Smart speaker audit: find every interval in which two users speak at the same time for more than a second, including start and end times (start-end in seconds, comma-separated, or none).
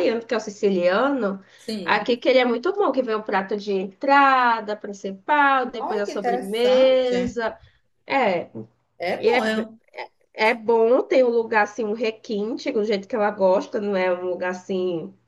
5.8-7.4